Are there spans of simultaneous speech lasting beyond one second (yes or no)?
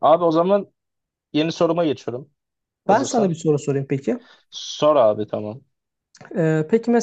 no